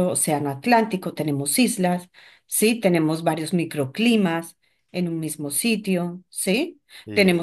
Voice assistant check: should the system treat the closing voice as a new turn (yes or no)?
no